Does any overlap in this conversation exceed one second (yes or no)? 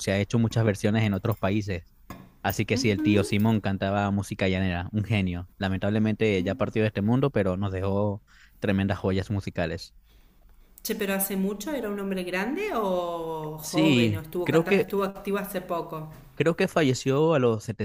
yes